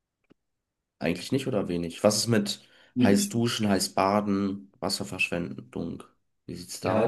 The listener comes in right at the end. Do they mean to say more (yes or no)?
yes